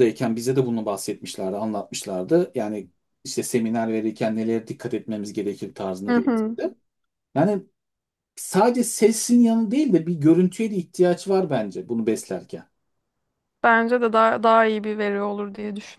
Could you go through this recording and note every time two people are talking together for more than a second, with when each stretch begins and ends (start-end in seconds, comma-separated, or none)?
none